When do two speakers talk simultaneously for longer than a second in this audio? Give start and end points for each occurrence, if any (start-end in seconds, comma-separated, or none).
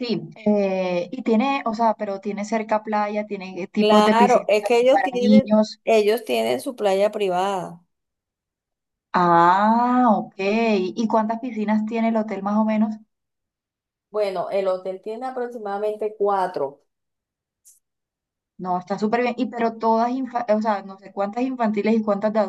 3.8-5.8